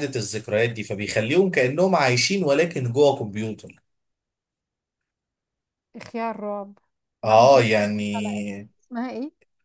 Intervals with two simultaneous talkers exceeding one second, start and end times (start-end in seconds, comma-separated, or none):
7.2-8.7